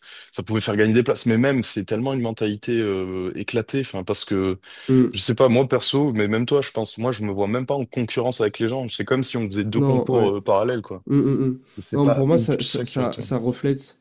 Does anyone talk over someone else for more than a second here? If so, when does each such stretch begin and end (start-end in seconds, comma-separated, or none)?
11.7-13.2